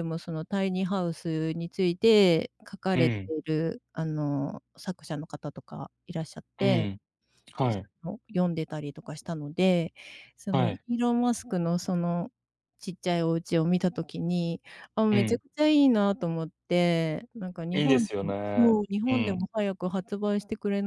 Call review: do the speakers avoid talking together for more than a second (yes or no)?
no